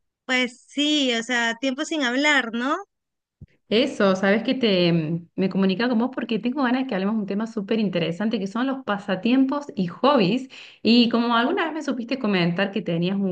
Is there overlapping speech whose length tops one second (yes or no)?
no